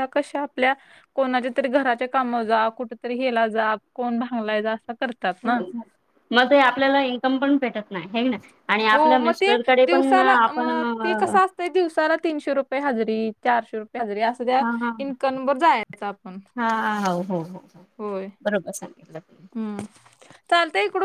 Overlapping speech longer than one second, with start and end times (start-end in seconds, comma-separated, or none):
8.9-10.7